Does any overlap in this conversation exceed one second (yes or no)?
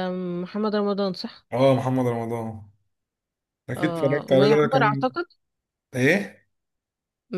yes